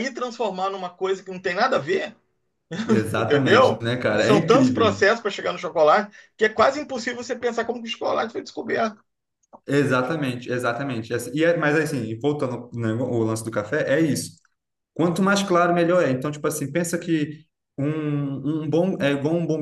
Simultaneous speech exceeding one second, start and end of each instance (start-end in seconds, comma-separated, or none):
3.1-5.0